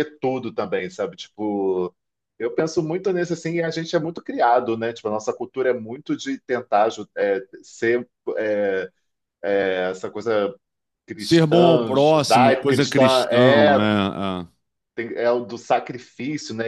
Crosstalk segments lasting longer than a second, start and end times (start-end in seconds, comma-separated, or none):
11.2-13.8